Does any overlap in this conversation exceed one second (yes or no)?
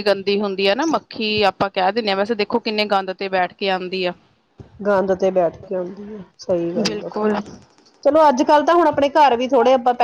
no